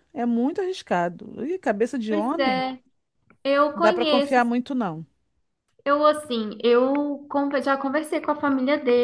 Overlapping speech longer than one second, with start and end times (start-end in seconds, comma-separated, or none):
none